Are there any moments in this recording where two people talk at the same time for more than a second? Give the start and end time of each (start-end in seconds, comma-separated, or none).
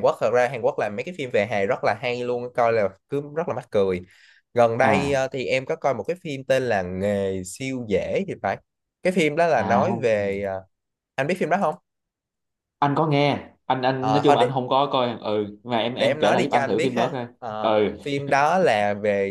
16.0-18.0